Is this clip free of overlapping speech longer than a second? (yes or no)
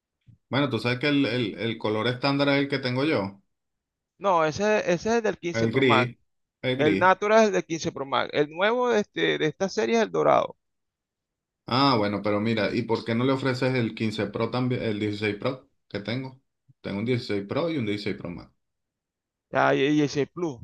yes